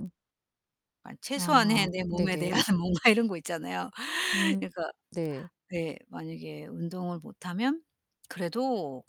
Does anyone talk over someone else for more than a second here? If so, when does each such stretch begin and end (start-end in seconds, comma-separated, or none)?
1.3-2.6